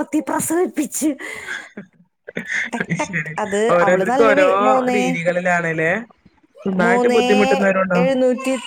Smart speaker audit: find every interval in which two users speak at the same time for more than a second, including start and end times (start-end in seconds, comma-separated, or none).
none